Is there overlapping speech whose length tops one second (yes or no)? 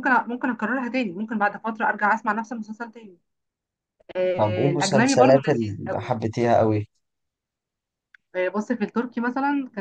yes